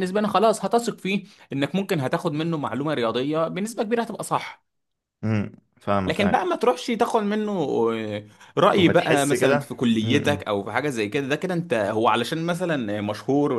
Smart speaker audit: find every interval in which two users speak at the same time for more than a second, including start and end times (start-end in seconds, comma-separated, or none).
8.8-10.4